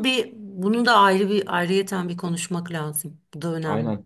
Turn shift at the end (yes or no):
yes